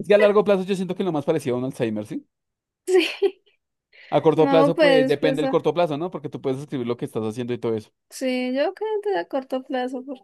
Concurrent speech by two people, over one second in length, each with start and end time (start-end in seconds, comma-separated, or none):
4.3-5.6